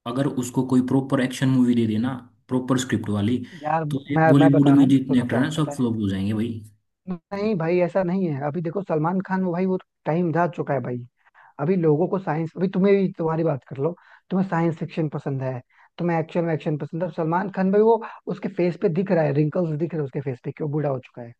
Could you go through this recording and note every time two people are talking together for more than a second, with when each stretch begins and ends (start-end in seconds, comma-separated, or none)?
3.9-5.8